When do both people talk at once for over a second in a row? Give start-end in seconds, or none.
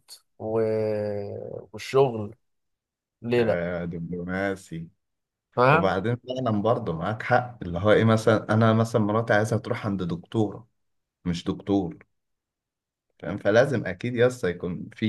none